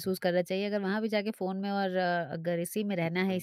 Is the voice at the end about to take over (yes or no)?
no